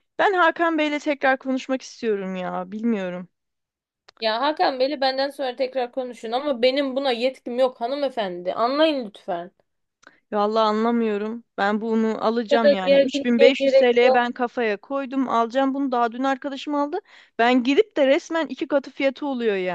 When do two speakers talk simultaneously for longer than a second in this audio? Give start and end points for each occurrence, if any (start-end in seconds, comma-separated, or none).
12.5-14.2